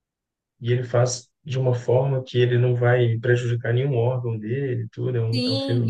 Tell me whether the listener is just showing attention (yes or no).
no